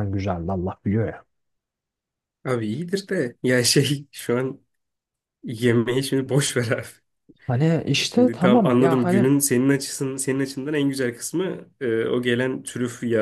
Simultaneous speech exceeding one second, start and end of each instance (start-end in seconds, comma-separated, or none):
8.1-9.3